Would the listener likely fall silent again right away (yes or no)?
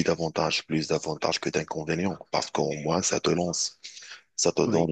yes